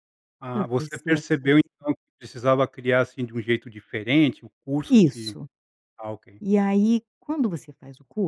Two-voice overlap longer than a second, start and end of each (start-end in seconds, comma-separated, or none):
0.5-1.9